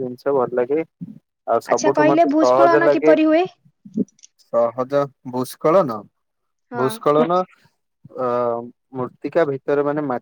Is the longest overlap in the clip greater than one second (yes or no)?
yes